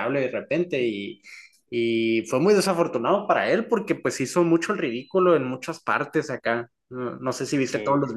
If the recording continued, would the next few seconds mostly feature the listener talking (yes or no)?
no